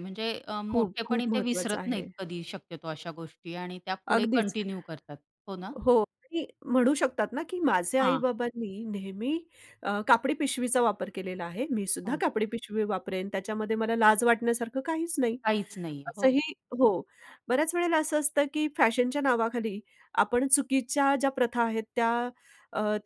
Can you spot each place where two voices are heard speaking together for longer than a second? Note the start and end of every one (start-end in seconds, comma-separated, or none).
0.7-2.0